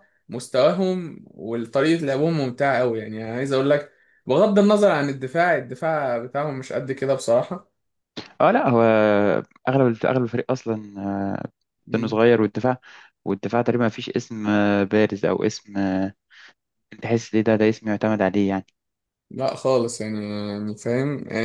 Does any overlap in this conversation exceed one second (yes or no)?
no